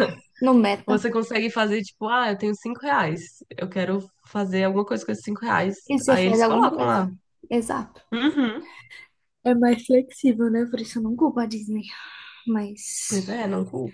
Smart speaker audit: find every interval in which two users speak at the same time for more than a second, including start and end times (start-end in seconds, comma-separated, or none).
5.8-7.1